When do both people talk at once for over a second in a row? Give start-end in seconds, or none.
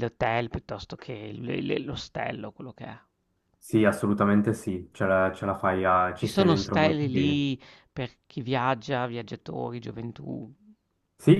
6.2-7.4